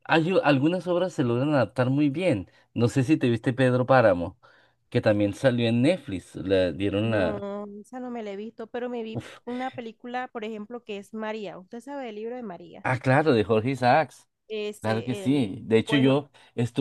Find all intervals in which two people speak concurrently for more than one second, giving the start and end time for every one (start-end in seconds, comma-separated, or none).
14.8-16.2